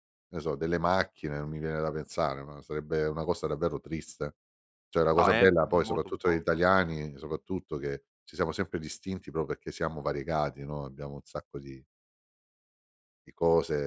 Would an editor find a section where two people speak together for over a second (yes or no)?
yes